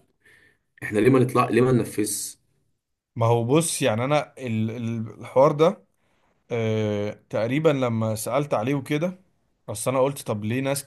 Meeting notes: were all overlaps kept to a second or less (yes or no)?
yes